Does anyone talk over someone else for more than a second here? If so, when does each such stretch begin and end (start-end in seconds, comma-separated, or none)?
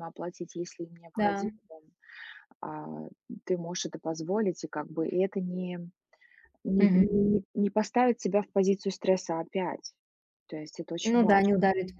none